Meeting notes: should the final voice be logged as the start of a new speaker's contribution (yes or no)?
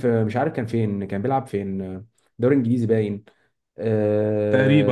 no